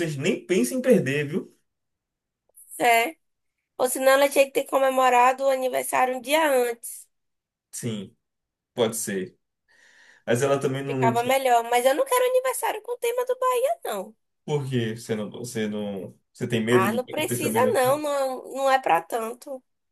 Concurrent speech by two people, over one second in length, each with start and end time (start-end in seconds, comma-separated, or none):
16.7-18.0